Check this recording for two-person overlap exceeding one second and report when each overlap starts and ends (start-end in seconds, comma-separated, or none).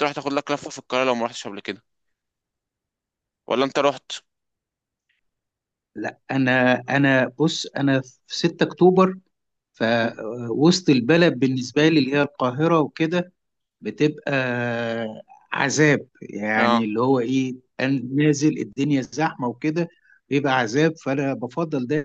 none